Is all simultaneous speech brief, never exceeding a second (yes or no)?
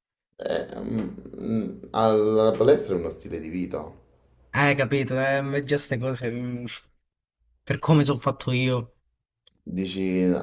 yes